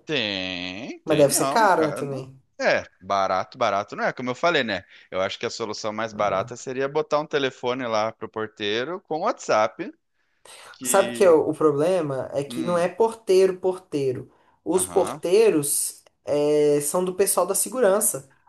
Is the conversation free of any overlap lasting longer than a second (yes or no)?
no